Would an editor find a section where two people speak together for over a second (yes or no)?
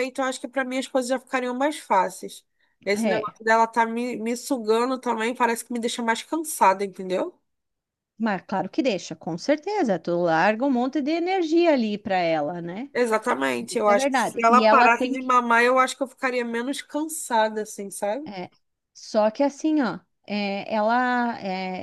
yes